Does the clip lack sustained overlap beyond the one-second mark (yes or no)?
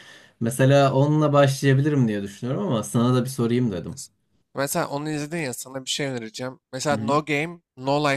yes